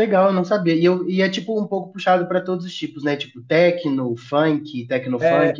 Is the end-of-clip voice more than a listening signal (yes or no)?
yes